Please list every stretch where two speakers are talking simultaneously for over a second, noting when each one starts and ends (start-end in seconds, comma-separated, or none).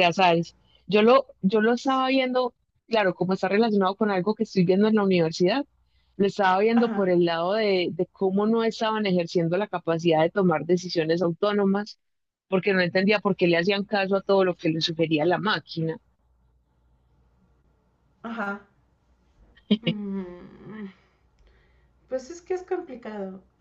none